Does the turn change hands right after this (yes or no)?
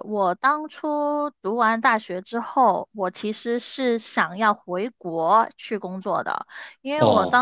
no